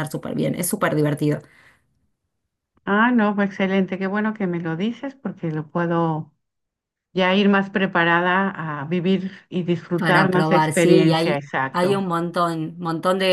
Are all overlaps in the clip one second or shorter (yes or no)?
no